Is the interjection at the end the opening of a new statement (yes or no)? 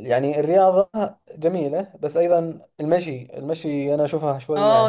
yes